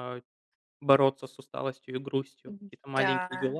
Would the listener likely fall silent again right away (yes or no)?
no